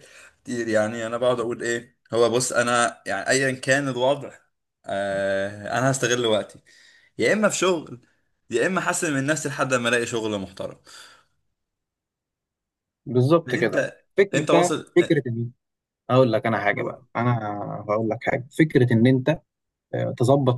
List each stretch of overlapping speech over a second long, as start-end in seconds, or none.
13.5-15.2